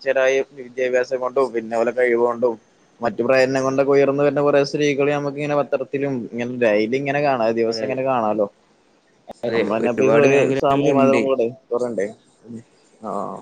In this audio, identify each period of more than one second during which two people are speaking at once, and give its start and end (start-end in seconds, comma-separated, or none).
9.5-11.2